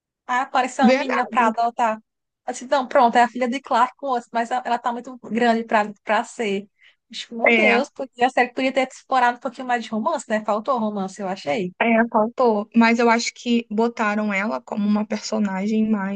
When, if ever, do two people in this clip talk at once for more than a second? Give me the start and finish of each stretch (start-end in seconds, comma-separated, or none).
none